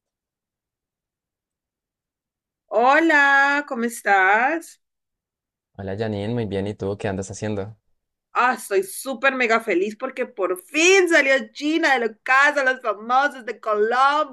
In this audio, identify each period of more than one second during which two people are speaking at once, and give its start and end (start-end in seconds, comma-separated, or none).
none